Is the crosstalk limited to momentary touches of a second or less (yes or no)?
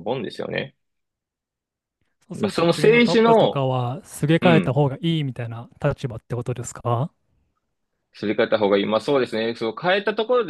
no